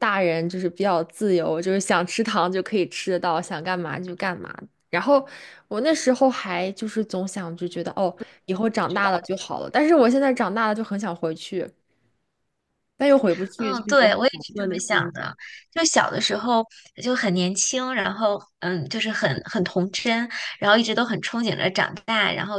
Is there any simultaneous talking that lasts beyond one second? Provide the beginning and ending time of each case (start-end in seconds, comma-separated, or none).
13.6-15.3